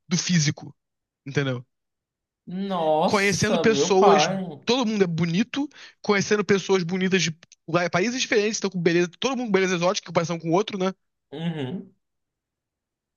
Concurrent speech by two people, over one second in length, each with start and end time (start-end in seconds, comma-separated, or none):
3.0-4.3